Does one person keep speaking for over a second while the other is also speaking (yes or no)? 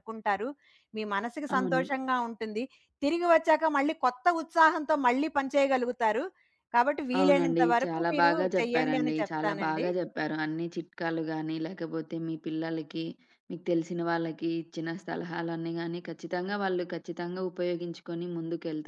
yes